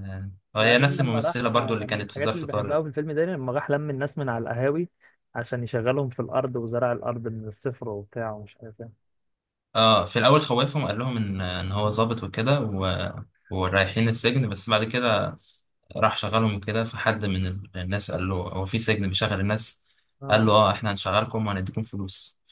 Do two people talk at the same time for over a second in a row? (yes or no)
yes